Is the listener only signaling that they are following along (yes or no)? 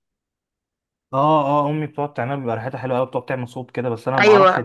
no